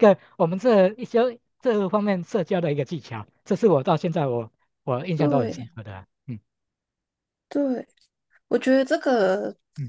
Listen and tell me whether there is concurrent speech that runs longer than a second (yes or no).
no